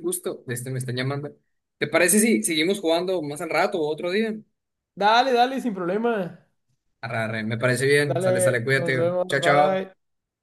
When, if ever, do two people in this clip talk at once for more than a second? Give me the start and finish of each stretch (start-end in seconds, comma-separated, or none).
8.1-9.8